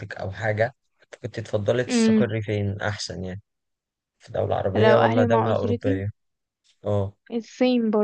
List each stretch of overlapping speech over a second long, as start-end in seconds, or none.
4.8-6.0